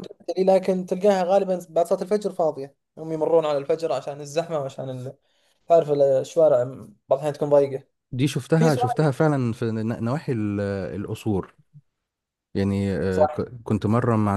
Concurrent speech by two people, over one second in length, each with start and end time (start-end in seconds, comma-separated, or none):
none